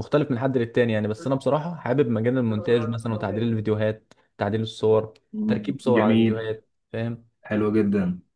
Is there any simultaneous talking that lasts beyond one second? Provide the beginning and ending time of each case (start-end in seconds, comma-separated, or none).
5.3-6.5